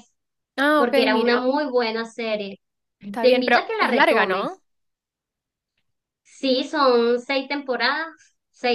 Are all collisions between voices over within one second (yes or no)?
no